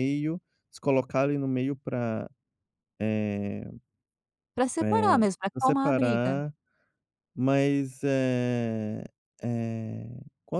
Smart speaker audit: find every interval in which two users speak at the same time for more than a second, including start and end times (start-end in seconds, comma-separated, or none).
4.8-6.3